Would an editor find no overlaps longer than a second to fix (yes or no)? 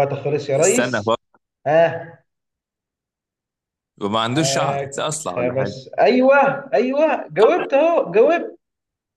no